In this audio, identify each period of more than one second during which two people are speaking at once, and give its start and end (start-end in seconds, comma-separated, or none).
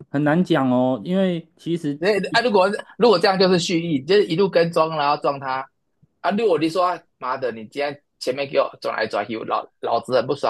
none